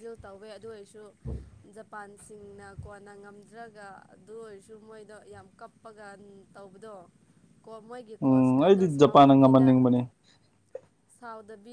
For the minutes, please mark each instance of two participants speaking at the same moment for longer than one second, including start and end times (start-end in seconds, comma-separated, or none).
8.2-9.7